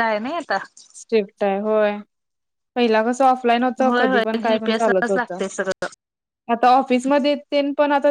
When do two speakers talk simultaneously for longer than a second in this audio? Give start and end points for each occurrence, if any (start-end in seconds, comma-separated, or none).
3.8-5.4